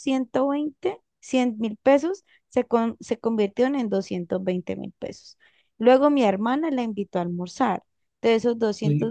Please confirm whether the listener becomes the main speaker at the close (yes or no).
no